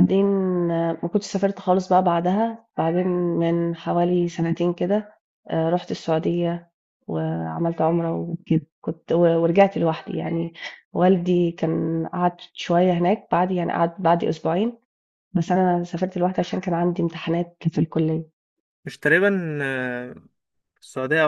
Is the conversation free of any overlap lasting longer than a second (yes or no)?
yes